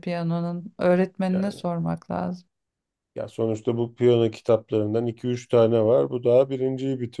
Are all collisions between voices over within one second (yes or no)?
yes